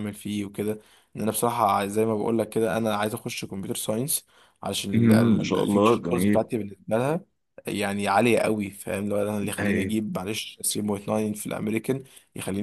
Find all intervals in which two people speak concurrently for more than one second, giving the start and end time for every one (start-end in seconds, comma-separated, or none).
4.9-6.4